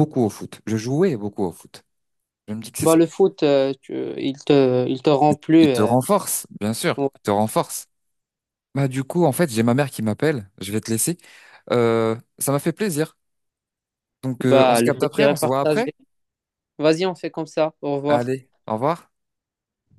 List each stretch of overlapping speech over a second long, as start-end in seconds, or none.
14.4-15.8